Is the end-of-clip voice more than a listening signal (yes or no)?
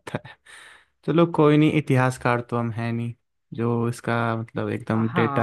yes